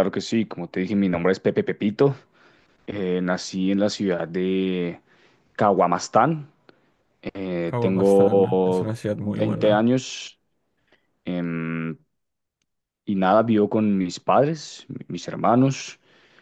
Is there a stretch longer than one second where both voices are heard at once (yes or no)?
yes